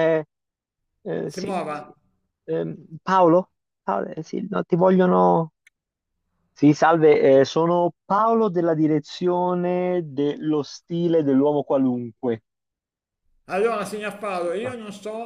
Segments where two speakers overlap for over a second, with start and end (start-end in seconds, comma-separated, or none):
none